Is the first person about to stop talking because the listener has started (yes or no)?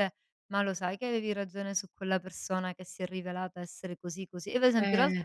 no